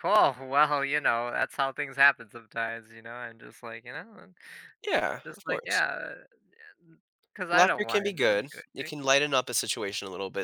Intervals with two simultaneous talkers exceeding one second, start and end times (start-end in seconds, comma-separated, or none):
7.5-8.9